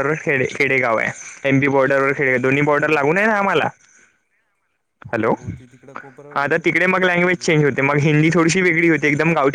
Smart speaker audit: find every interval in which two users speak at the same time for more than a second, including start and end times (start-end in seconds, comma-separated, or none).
6.3-7.6